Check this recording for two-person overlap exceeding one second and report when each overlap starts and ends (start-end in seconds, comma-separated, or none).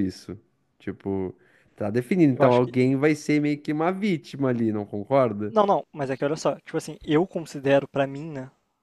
none